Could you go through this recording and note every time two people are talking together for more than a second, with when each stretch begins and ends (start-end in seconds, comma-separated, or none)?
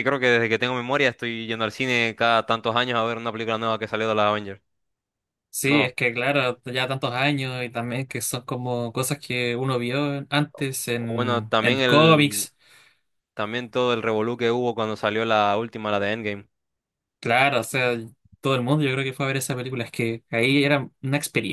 11.0-12.5